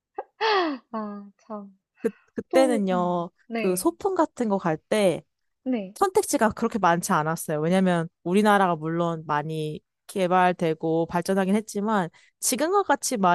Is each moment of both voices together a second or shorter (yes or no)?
no